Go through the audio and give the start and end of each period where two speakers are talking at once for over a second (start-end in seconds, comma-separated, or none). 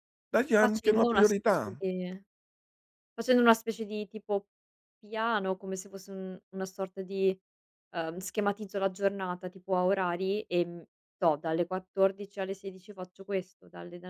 0.5-1.8